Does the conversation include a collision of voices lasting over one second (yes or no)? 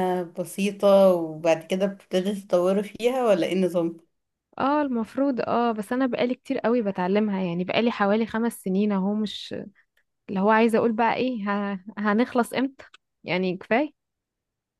no